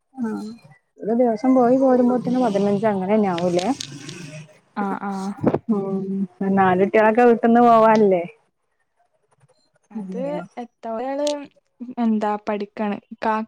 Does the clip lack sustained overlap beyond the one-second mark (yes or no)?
yes